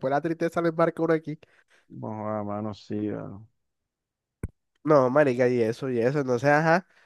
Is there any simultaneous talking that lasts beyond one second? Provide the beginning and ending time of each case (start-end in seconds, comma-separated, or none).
none